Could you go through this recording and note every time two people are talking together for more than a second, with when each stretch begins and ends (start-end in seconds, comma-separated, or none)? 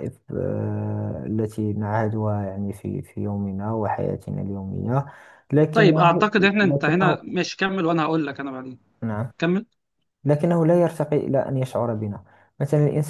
5.7-7.2